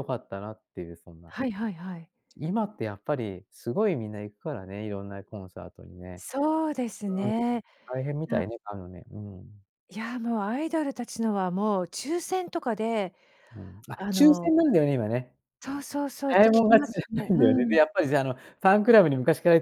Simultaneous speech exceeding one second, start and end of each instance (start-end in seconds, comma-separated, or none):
16.3-17.8